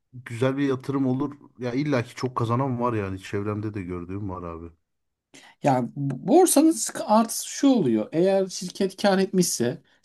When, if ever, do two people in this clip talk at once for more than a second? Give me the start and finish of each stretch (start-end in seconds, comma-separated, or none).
none